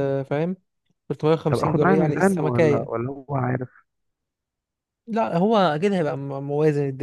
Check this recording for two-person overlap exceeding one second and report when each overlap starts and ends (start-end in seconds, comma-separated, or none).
1.5-3.0